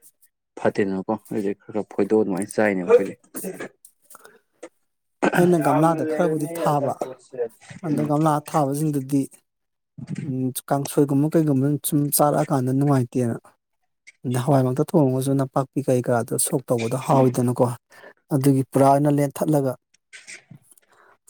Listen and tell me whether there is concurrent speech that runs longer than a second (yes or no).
yes